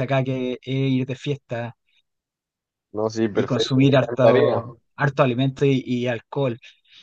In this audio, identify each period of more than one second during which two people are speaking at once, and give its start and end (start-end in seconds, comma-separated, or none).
3.3-4.6